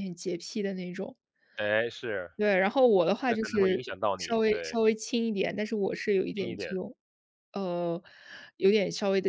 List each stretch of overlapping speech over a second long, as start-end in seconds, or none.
3.3-4.8